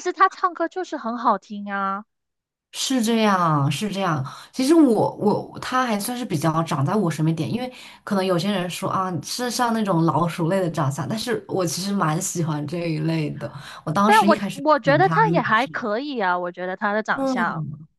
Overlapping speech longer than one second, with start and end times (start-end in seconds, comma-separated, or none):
14.0-15.9